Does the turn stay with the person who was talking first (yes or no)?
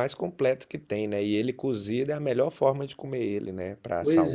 no